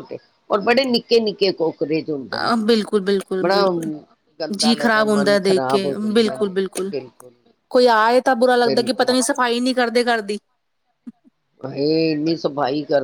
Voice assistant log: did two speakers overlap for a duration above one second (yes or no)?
yes